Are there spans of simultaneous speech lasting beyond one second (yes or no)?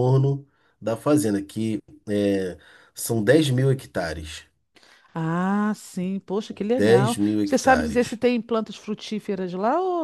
yes